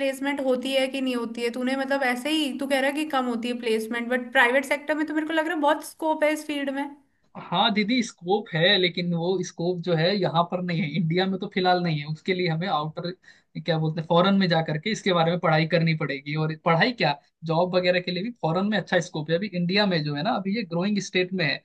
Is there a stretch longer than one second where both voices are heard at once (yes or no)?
no